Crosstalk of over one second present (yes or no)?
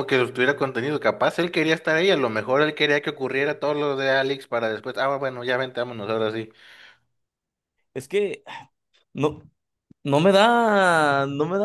no